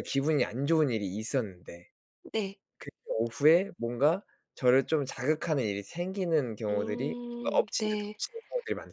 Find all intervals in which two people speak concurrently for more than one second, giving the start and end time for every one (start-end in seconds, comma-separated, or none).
6.7-8.2